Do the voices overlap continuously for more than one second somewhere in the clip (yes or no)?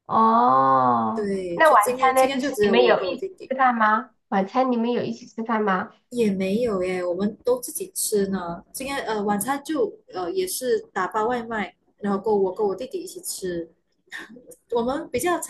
yes